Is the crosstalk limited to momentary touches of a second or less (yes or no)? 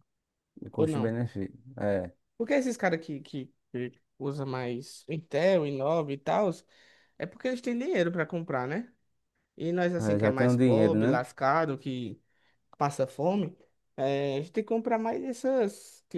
no